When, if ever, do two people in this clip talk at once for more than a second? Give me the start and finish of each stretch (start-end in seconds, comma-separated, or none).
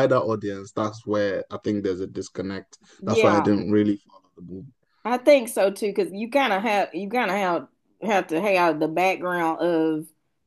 none